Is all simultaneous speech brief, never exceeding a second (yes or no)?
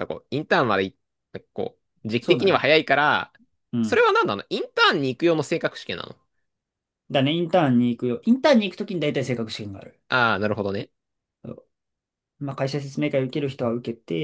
yes